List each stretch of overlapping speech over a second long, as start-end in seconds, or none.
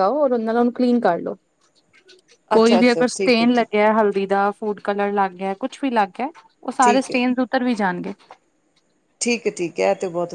2.6-3.8